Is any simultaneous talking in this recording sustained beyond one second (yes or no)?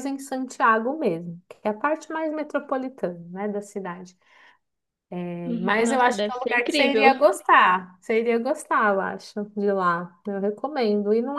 yes